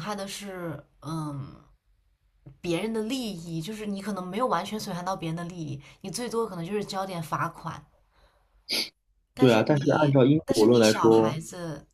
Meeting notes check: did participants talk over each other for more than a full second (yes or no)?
yes